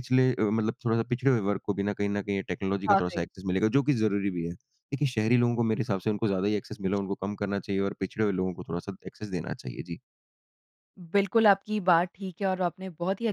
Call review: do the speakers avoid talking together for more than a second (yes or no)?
yes